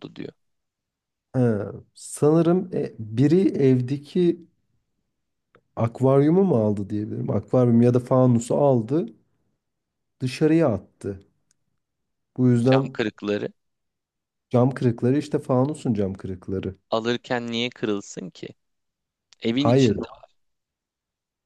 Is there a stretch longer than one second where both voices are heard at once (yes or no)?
no